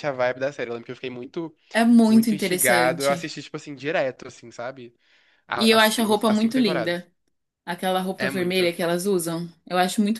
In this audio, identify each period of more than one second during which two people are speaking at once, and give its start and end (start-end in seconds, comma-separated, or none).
2.1-3.3, 5.5-7.0